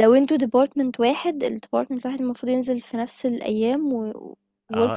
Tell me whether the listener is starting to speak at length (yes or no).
yes